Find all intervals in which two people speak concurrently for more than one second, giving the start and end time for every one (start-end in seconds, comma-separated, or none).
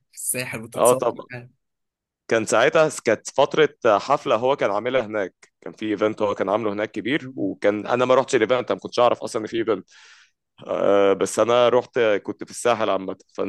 none